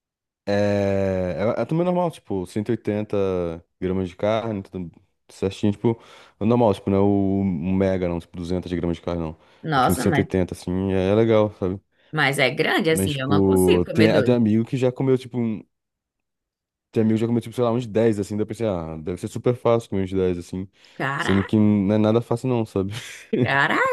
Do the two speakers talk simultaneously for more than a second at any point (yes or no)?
yes